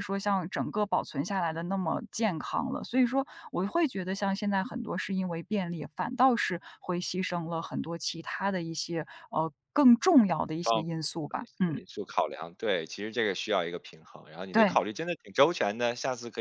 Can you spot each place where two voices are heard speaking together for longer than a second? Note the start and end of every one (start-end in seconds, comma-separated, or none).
none